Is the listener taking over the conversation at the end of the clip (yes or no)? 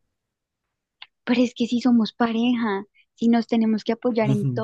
yes